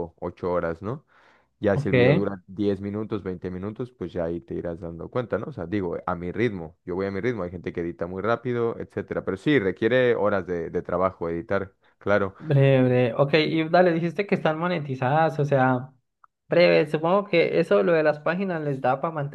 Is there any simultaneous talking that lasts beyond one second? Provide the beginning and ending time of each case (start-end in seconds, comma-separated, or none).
none